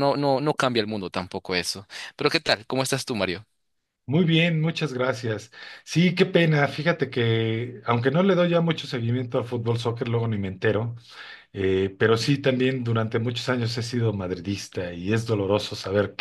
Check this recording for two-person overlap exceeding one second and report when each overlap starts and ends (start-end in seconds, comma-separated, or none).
none